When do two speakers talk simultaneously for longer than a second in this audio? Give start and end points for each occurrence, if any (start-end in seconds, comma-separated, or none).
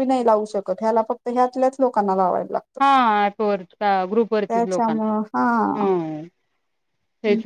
4.5-5.9